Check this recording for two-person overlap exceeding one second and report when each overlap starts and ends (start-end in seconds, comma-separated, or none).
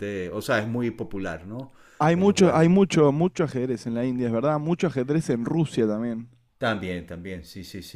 none